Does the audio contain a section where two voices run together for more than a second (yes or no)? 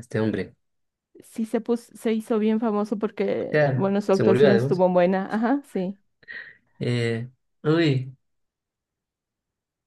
yes